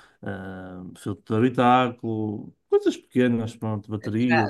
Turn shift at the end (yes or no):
yes